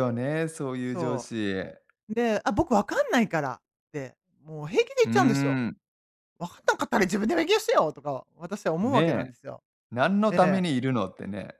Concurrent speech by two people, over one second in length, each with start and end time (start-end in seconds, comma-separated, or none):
none